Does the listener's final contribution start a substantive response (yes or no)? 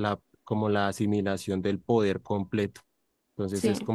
no